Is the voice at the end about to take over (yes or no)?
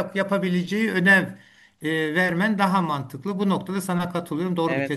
yes